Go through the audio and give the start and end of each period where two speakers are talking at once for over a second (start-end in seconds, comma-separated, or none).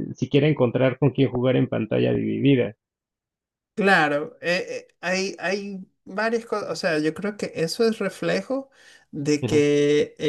none